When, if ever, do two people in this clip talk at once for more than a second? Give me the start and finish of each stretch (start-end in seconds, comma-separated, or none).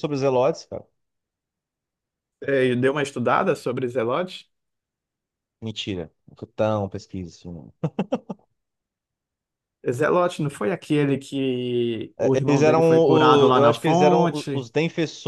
12.2-14.7